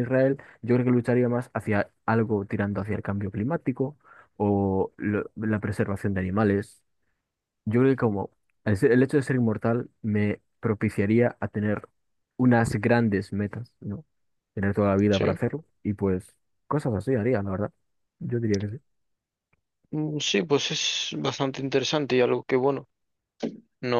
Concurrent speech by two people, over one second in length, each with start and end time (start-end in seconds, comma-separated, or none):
none